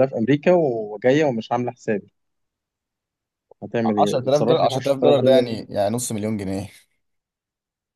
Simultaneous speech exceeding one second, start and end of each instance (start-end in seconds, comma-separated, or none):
4.0-5.4